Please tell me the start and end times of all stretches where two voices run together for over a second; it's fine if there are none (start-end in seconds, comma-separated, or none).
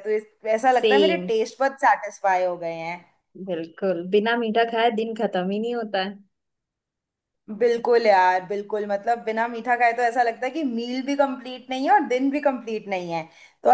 none